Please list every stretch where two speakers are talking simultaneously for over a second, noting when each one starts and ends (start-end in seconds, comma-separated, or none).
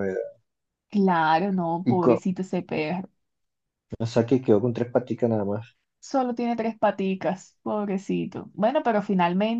none